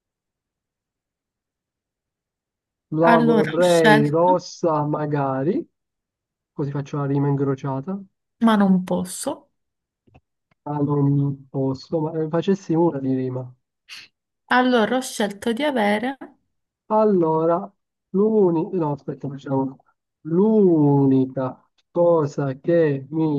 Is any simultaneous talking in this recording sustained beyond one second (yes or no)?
yes